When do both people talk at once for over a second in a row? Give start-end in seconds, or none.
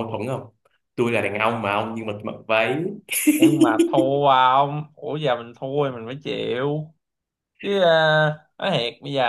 none